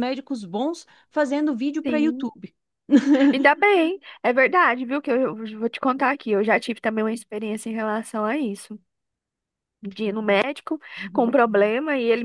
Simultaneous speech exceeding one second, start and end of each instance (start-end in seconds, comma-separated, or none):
none